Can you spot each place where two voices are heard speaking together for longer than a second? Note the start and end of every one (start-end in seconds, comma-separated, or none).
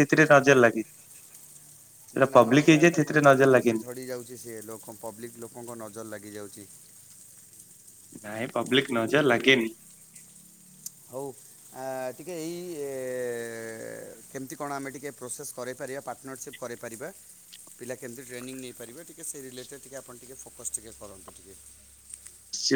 2.2-3.8